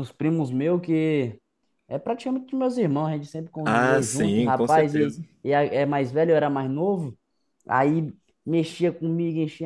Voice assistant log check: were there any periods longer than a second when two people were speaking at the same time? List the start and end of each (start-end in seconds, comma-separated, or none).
3.6-5.2